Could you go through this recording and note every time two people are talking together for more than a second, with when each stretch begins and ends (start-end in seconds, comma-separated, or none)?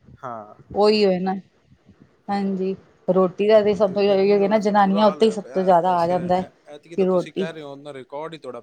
4.1-6.1